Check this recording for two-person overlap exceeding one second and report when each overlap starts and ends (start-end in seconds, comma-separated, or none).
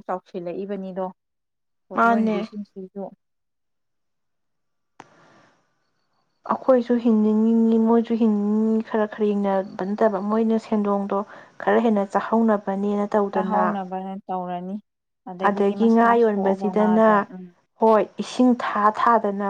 15.5-17.1